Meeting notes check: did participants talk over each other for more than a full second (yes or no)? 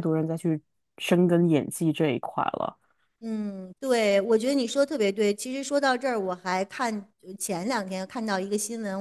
no